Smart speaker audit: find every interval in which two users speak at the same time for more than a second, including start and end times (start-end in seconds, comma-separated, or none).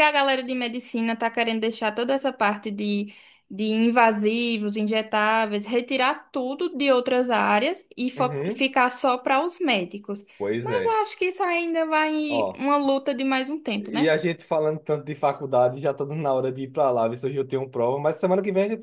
none